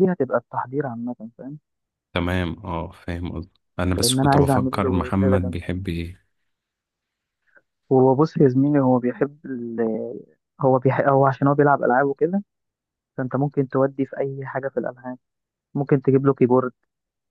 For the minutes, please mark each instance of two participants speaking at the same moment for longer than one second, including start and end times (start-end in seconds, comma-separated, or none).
4.0-5.6